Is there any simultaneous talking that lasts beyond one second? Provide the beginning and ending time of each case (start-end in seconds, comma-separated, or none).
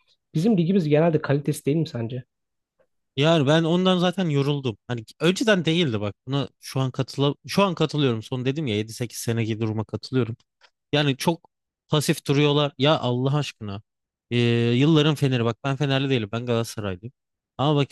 none